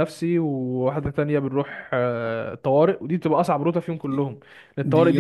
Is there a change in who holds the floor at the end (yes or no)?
yes